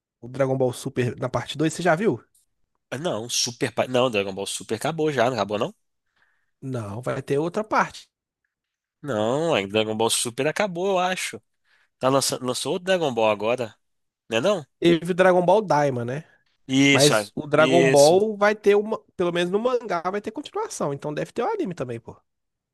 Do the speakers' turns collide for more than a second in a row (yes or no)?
yes